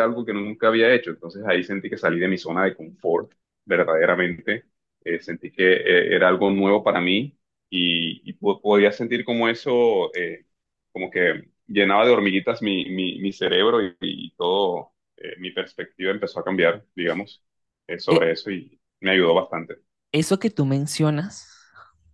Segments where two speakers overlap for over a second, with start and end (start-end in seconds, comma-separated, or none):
none